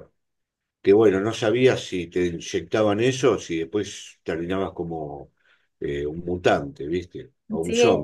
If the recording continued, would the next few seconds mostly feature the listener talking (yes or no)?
no